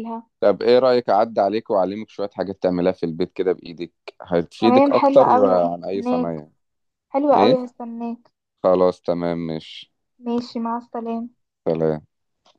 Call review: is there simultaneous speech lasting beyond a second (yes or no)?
yes